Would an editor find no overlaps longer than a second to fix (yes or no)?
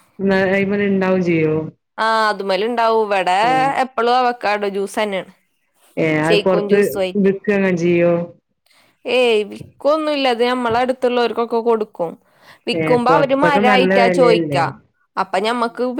no